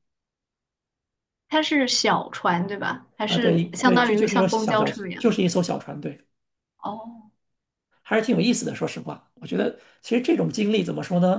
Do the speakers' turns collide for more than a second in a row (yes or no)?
yes